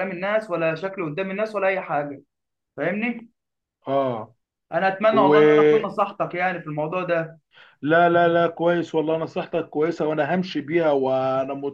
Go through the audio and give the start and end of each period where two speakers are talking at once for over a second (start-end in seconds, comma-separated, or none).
none